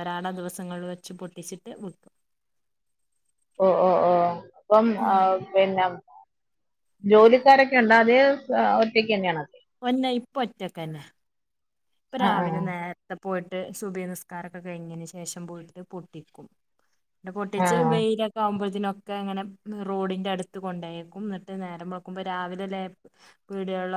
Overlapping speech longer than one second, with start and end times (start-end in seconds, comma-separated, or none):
none